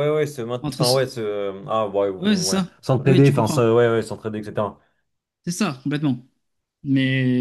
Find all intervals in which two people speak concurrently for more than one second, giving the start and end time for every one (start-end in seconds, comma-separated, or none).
2.2-3.7